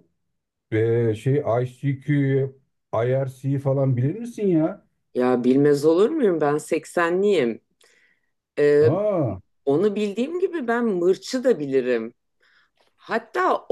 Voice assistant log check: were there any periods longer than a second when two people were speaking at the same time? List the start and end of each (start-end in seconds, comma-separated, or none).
none